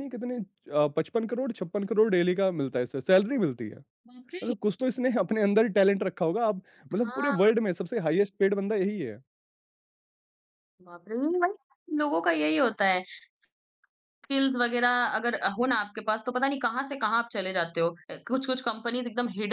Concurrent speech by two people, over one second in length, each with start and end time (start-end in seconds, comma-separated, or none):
none